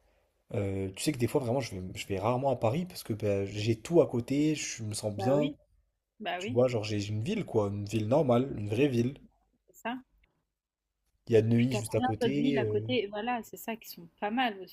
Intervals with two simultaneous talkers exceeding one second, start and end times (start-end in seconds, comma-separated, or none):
11.6-12.9